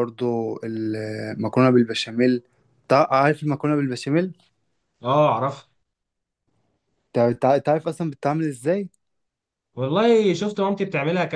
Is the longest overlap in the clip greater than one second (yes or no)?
no